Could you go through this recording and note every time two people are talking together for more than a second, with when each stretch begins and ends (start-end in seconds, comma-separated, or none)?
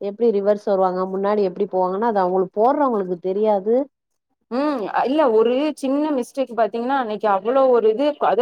none